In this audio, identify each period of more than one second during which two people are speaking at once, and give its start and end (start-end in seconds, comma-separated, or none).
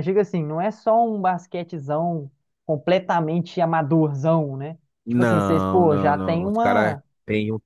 5.0-7.0